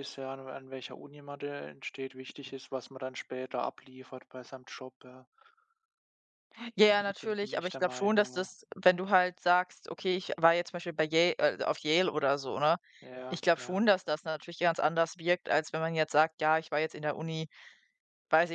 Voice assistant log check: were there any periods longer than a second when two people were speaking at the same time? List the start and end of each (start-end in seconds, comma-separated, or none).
7.2-8.5